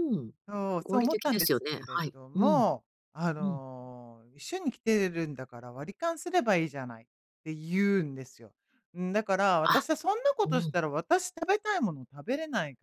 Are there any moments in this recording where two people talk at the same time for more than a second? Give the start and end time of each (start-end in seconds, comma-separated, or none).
0.8-2.6